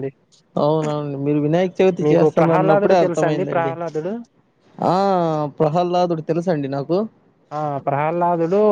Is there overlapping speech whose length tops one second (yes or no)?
yes